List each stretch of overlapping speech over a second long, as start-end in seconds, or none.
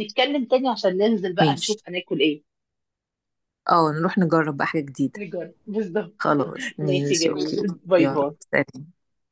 6.8-8.3